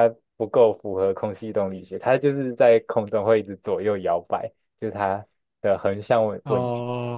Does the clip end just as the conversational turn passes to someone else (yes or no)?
yes